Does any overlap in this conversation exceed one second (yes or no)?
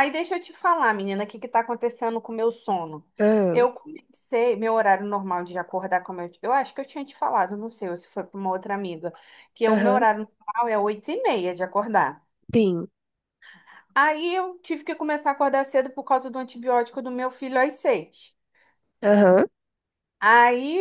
no